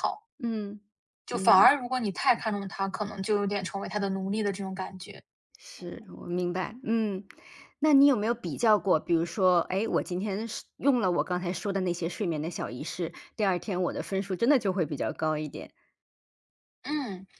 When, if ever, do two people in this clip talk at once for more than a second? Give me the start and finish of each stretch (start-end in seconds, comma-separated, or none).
none